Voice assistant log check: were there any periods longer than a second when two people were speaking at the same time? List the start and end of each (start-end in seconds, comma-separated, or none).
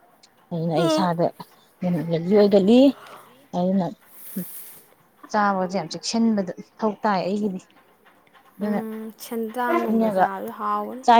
none